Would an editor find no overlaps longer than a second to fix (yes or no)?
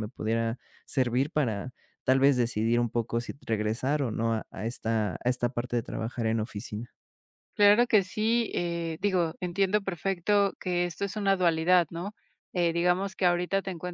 yes